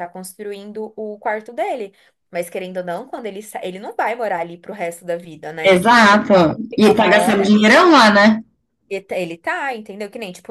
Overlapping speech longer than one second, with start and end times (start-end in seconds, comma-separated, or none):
5.7-7.8